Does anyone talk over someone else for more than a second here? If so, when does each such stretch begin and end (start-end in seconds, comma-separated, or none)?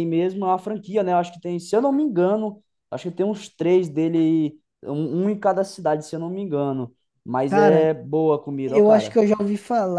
none